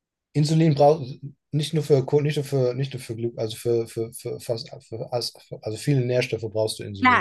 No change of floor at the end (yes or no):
no